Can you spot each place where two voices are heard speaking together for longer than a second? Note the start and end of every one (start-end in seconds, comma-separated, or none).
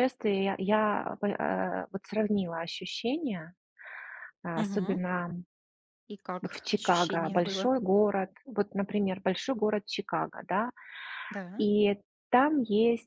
6.4-7.7